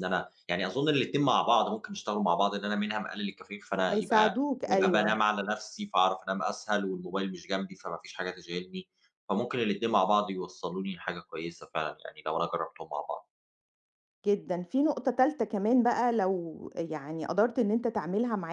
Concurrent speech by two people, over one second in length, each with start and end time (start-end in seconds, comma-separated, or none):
3.9-5.2